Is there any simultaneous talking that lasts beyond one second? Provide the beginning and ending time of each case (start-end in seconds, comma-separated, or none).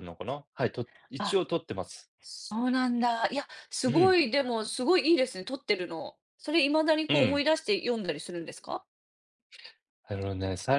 none